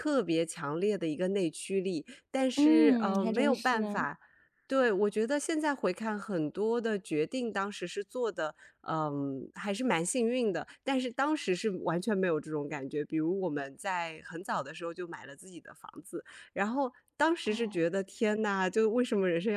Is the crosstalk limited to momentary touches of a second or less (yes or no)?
no